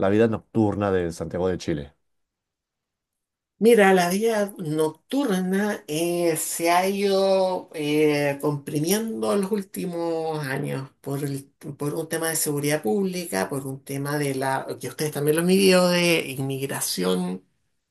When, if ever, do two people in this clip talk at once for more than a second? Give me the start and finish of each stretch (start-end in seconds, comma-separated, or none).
none